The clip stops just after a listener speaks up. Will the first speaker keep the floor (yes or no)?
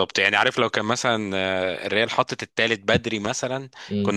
yes